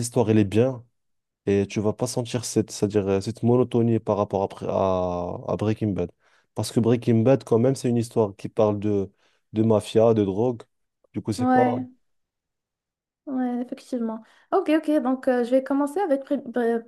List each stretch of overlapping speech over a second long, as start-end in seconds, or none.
none